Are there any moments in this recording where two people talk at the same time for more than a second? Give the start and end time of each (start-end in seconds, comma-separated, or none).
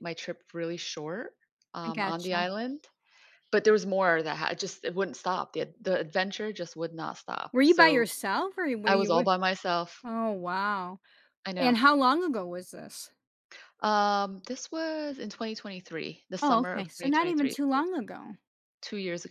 16.4-17.8